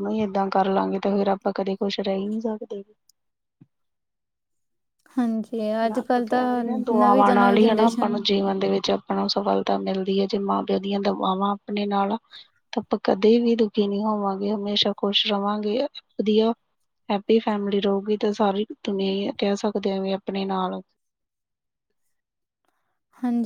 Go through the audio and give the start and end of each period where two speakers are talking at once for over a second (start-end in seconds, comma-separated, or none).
5.8-8.2